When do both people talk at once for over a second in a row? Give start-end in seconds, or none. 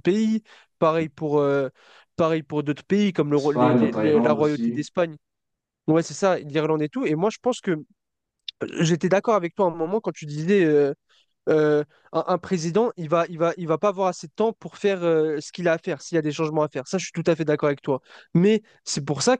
3.3-4.8